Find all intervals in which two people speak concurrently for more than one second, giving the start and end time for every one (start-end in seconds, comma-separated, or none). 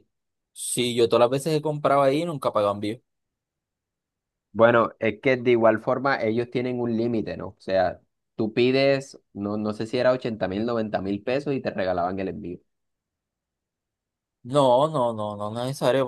none